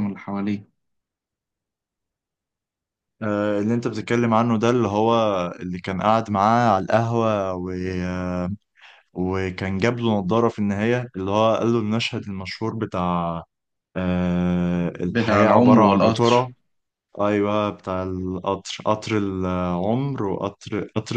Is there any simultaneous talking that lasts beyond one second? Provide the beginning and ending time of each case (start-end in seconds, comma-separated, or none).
15.1-16.5